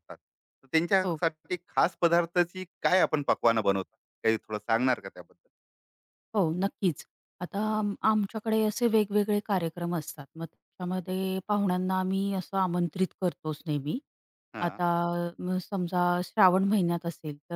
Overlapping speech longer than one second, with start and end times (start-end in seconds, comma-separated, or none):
none